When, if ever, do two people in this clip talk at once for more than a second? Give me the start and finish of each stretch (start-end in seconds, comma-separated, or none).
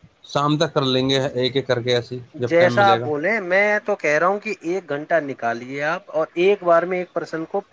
none